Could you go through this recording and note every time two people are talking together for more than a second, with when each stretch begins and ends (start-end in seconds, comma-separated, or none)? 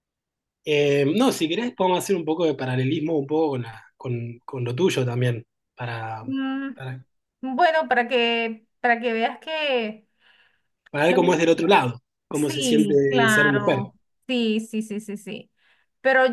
12.3-13.8